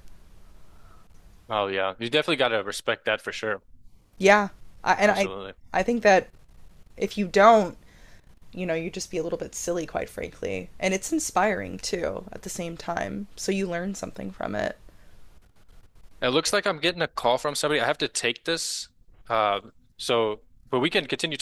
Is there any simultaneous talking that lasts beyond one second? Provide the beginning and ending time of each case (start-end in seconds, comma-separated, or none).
none